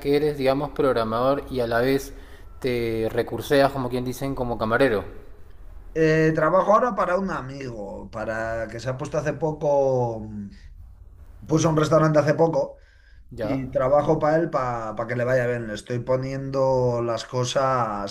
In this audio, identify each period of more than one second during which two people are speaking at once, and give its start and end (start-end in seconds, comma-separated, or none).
none